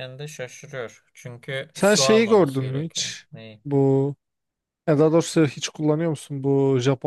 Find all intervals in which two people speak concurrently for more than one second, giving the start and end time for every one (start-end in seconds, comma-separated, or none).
1.7-3.2